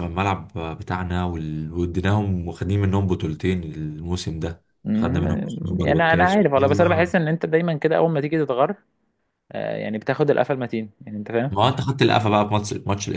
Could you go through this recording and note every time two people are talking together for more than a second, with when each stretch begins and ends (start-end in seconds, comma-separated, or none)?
4.8-7.1